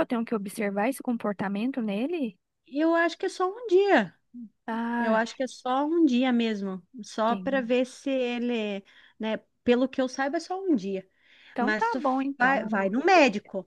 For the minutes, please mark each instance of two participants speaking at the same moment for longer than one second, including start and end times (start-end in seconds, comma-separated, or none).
11.6-13.0